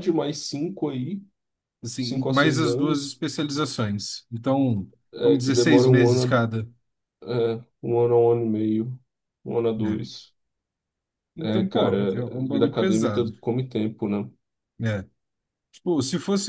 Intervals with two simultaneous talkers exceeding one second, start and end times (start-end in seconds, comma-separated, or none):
2.0-3.2, 5.1-6.5, 11.4-13.4